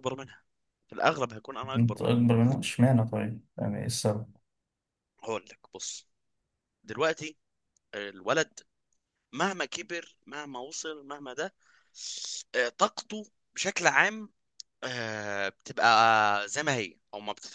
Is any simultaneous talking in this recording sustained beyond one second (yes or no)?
no